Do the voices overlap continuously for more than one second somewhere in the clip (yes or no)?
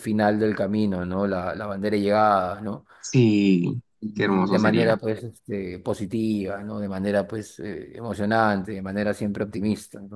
yes